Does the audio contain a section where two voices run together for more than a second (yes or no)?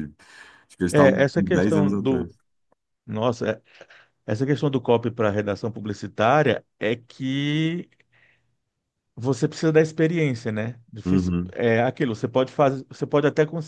yes